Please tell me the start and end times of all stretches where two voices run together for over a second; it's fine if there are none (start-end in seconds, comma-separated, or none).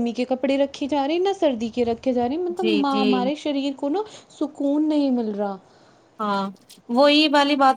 none